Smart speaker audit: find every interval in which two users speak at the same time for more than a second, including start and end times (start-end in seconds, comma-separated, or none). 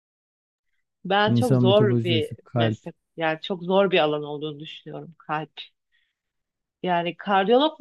1.2-2.9